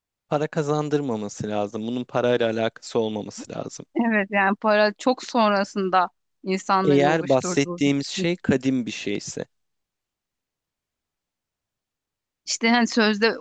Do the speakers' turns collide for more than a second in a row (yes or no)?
yes